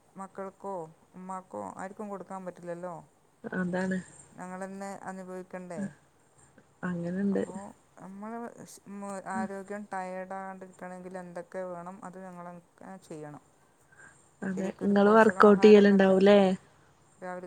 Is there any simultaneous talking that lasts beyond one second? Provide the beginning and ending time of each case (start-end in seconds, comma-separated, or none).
14.5-16.1